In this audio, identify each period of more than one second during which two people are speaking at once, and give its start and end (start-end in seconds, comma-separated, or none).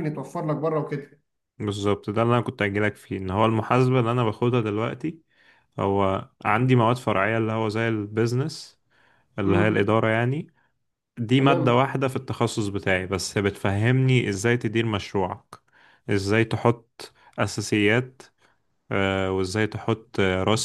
none